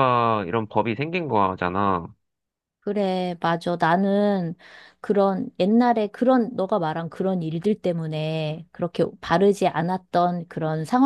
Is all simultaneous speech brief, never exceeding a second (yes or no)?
yes